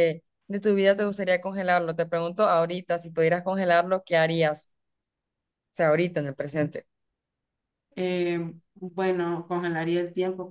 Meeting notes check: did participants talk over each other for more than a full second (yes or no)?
no